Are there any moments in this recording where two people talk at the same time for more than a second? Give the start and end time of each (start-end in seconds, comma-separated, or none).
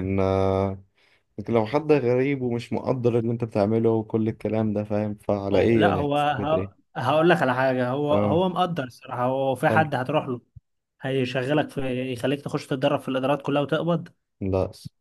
5.5-6.8